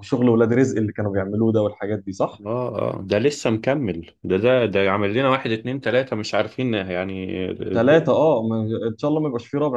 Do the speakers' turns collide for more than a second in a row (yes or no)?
no